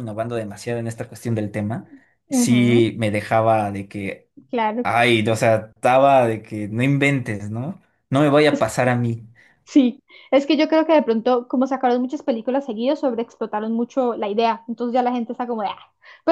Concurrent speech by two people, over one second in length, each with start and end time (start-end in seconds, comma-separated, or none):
none